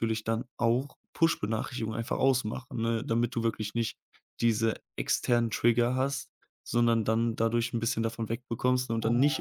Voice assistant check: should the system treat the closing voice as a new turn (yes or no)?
no